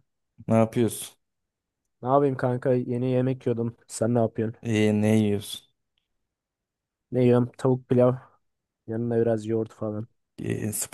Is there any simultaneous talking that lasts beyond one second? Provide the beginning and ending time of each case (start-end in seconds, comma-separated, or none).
none